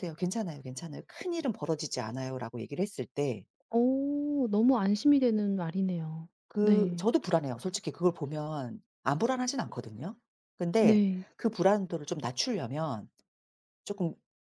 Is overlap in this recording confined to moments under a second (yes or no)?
yes